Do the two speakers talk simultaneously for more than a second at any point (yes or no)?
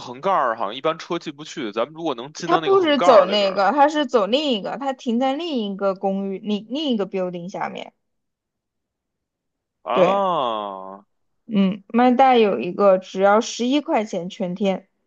yes